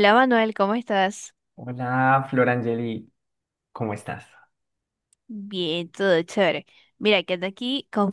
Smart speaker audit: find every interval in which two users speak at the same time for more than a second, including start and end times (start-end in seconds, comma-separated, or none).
none